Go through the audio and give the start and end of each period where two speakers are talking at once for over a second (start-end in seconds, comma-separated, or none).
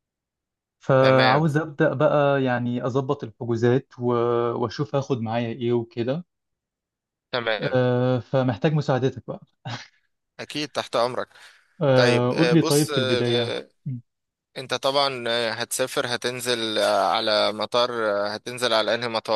11.9-13.5